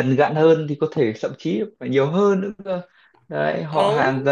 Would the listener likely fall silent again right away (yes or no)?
yes